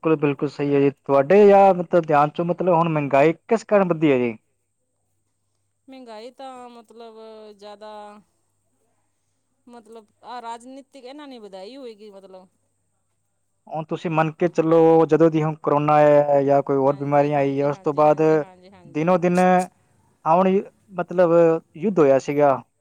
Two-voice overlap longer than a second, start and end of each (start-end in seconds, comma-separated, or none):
16.9-18.2